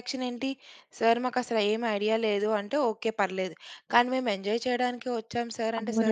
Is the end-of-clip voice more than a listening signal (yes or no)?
yes